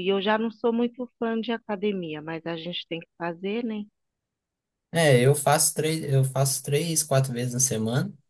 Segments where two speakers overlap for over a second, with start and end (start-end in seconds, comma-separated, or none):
none